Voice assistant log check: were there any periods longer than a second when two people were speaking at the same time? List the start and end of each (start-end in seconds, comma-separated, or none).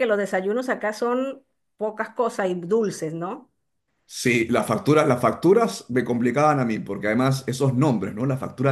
none